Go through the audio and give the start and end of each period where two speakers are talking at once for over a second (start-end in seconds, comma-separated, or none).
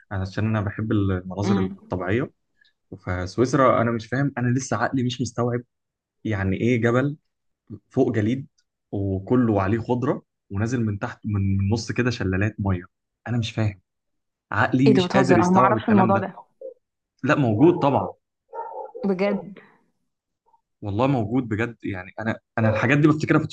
14.9-16.3